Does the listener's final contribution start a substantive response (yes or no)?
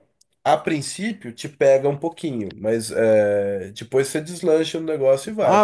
yes